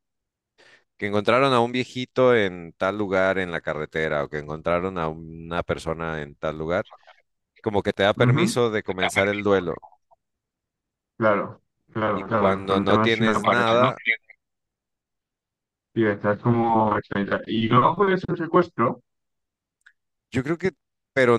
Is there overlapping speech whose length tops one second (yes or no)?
yes